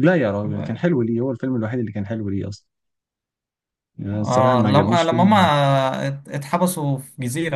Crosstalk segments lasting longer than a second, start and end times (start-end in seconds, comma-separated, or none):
4.1-5.5